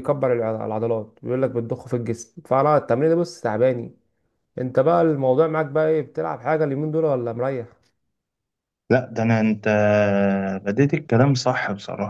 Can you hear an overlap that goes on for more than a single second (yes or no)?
no